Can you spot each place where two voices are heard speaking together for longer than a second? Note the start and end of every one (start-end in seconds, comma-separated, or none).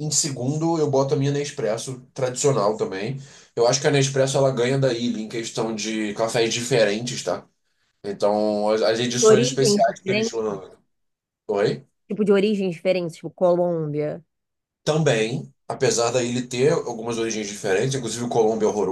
9.2-10.5